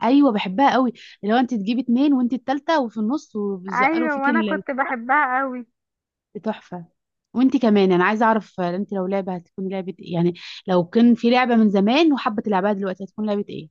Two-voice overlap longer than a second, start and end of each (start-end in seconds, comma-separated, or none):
3.7-4.9